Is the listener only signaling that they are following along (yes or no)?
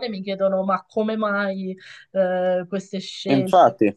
yes